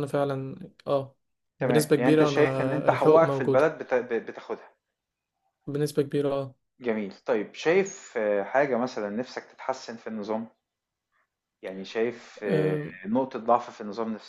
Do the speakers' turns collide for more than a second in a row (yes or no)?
yes